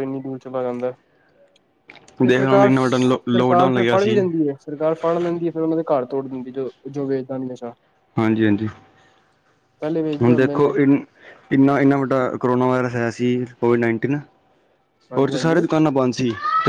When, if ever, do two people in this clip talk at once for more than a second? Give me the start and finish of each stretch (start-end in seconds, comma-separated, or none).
2.3-4.2